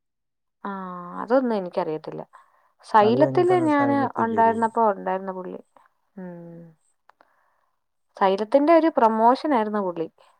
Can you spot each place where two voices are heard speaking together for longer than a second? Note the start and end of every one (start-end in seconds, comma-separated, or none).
3.0-4.7